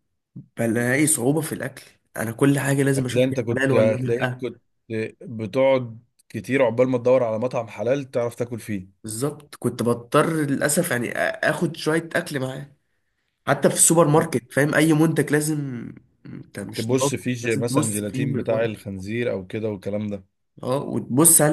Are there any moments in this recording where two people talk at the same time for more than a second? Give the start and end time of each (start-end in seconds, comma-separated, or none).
3.0-4.4, 16.8-18.7